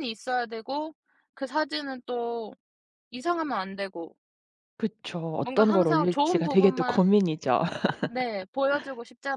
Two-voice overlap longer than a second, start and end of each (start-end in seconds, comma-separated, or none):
5.4-7.0